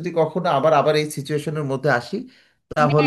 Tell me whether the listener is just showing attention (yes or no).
no